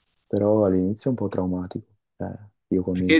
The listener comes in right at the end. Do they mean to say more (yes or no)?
no